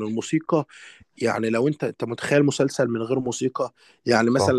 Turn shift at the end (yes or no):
no